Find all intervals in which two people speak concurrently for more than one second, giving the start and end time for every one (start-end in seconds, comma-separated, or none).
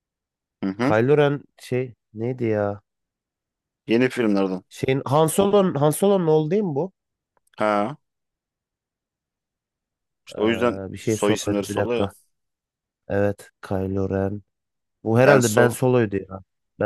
10.3-12.1